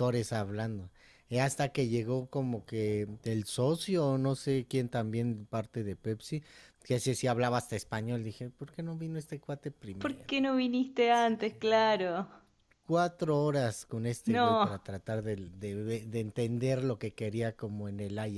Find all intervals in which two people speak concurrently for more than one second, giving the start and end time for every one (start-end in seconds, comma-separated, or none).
none